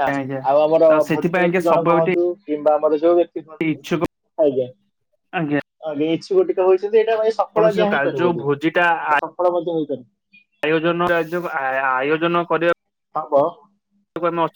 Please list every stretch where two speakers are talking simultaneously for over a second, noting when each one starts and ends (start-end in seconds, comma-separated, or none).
7.5-8.8